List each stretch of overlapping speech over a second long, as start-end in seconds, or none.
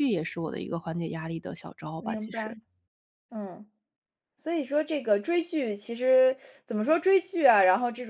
none